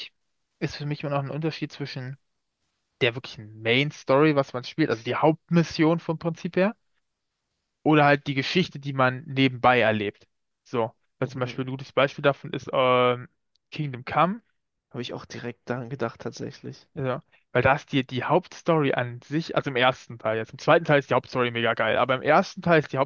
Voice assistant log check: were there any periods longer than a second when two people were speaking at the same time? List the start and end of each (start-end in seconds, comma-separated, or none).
none